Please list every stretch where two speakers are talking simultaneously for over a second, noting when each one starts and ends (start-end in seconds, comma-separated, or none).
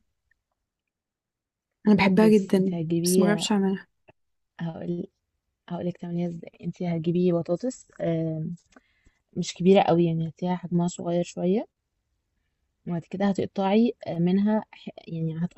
2.2-3.5